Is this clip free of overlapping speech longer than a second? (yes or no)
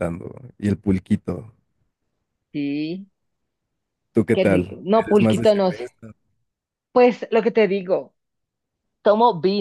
no